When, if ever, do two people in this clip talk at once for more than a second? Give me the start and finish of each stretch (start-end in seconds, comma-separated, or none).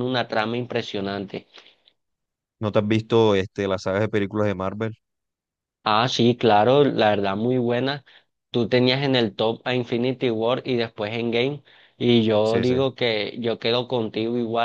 none